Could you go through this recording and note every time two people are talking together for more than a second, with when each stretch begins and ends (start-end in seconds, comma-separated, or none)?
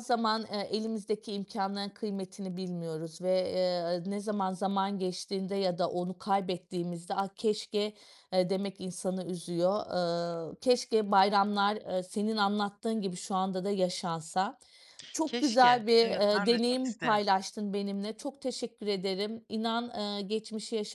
15.2-17.2